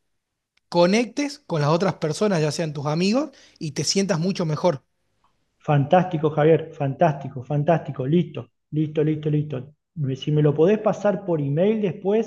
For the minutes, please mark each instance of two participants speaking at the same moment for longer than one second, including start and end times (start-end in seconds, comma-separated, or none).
none